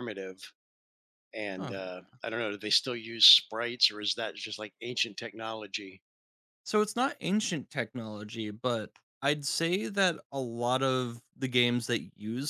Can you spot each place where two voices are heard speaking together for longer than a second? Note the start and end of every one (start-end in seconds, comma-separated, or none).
none